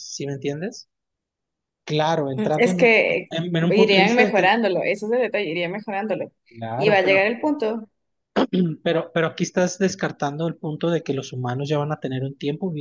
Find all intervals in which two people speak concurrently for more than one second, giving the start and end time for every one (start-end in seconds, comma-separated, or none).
2.4-4.5